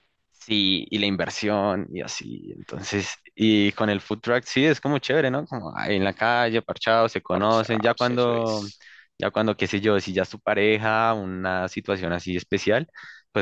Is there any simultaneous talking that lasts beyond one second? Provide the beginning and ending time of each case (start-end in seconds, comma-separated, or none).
7.3-8.7